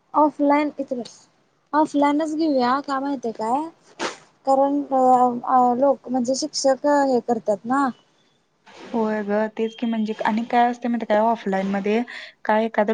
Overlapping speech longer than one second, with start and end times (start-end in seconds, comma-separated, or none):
none